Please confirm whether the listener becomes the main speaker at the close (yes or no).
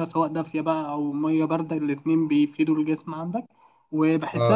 no